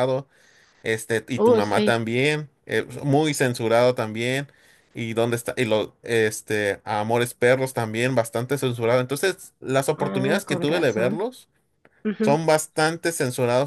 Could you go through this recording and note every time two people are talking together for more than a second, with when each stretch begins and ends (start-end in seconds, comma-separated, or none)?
10.0-11.2